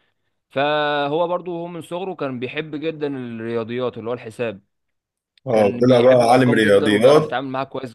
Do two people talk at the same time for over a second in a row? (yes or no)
yes